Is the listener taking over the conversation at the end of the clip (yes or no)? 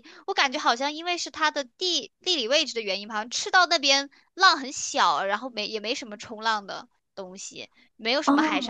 no